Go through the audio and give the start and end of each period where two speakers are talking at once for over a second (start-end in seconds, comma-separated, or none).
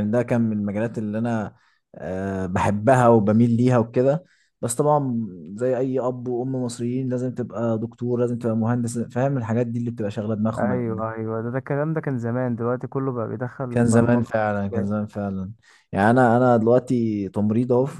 13.7-14.9